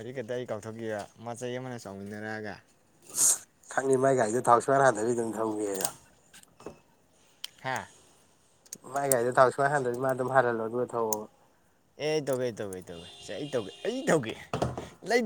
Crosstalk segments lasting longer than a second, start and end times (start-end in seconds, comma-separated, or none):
none